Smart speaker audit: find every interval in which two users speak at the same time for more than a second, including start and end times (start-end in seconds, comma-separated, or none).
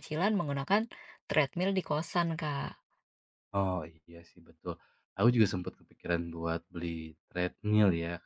none